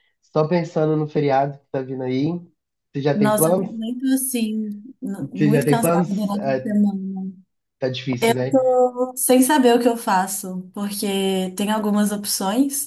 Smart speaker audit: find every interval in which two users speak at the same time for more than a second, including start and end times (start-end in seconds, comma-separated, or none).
5.3-6.6